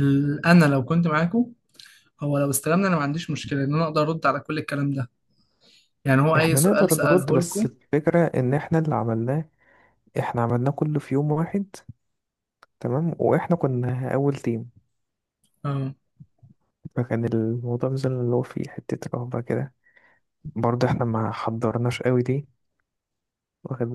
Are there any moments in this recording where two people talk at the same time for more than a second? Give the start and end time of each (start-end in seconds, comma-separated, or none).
6.3-7.7